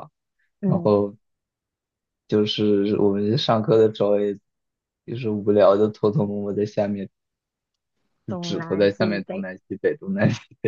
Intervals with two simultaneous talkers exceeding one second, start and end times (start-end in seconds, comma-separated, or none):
8.3-9.5